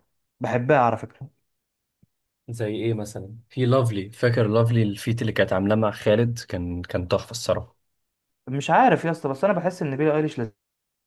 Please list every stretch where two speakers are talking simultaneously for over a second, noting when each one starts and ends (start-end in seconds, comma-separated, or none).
none